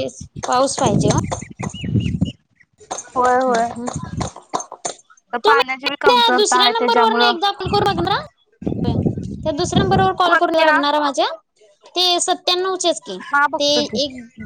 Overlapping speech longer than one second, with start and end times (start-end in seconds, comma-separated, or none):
5.5-7.3